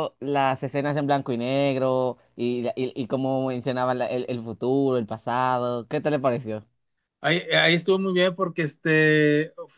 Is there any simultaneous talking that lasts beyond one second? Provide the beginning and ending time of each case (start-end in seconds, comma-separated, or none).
none